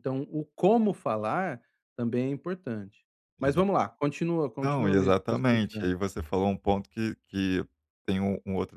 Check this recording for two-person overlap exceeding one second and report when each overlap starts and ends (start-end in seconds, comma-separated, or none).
4.6-5.9